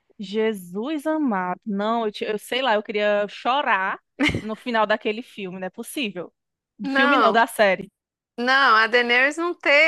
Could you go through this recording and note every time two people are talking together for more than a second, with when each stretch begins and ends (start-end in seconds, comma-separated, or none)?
none